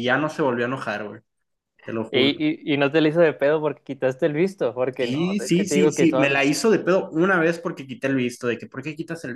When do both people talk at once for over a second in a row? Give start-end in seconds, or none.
5.0-6.4